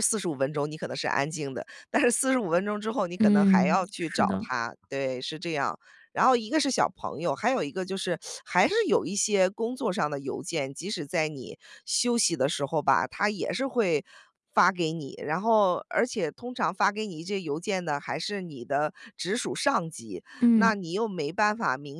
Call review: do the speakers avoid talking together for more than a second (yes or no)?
no